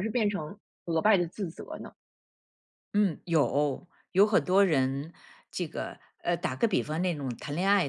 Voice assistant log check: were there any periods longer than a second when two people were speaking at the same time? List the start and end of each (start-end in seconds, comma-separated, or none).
none